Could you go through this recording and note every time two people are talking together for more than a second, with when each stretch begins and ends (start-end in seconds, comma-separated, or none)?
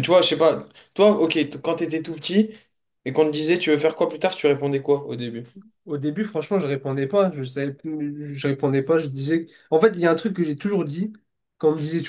none